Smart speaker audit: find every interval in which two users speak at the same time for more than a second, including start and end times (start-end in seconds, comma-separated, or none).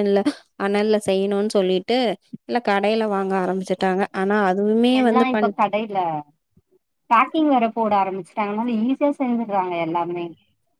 none